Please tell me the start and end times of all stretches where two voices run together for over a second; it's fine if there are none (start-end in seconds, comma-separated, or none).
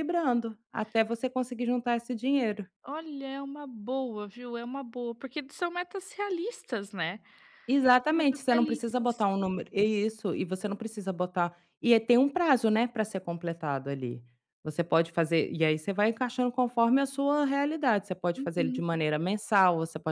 8.1-9.3